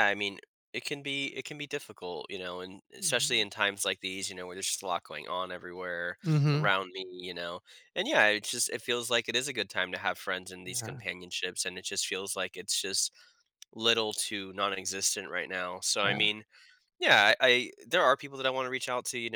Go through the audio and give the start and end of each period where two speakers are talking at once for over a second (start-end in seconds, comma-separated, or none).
none